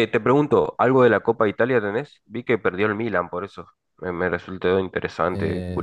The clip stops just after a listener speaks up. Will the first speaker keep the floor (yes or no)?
no